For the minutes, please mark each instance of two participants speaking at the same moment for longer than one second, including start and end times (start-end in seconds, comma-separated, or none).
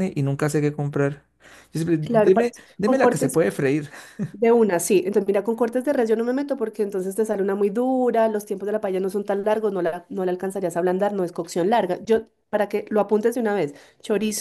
2.0-3.4